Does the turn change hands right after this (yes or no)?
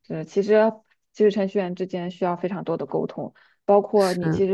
no